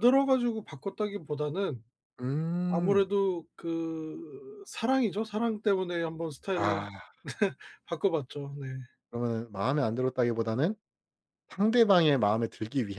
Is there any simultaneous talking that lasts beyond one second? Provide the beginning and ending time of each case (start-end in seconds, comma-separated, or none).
none